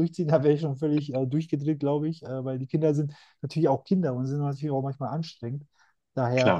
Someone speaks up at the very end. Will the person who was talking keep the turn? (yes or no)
yes